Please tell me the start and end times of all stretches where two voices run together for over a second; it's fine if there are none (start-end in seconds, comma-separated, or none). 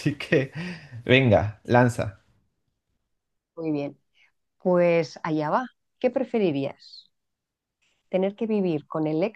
none